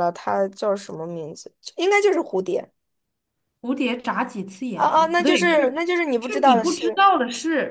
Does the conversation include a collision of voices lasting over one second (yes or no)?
yes